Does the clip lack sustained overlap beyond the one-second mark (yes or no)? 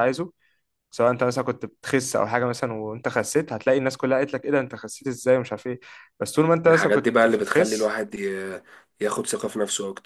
no